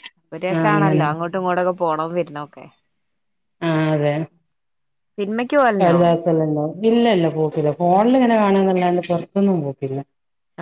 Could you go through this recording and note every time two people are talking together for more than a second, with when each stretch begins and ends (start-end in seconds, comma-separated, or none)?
none